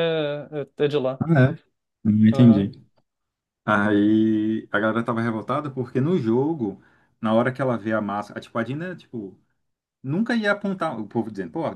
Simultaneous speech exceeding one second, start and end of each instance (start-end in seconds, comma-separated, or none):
none